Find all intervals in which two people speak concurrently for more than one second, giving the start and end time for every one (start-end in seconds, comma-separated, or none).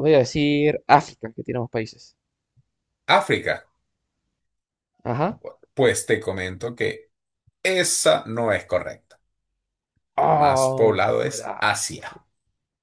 10.2-11.7